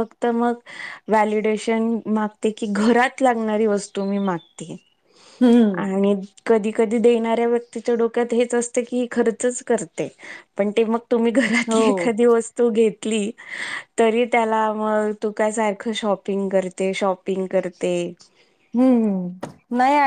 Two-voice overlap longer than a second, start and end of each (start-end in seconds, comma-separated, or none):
none